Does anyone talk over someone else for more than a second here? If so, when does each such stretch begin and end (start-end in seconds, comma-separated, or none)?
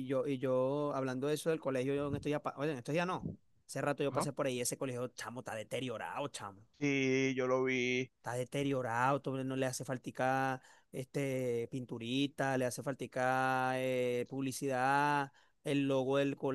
none